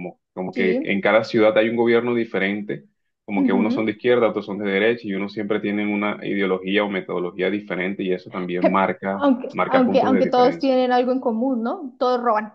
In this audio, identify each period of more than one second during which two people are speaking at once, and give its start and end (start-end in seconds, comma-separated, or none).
9.1-10.8